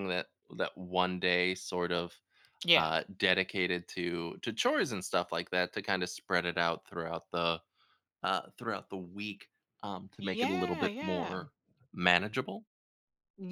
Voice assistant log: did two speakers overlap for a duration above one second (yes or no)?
yes